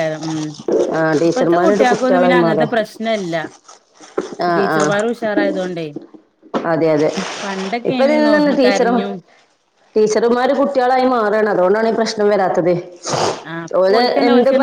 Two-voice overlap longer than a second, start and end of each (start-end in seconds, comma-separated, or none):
1.3-2.7